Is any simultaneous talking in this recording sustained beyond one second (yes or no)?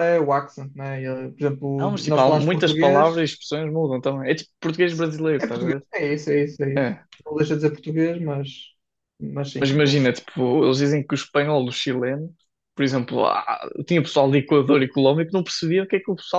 yes